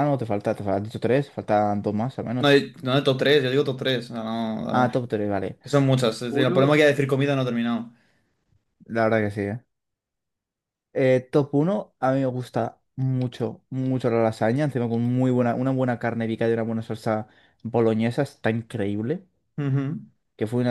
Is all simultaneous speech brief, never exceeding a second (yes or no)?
yes